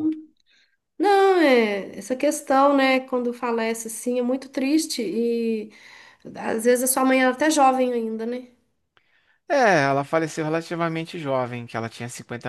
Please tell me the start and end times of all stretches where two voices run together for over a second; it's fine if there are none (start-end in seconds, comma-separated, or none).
none